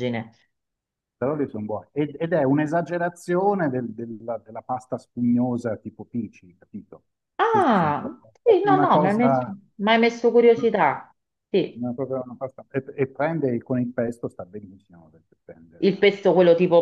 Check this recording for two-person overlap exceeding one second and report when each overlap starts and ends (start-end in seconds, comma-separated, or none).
7.5-9.6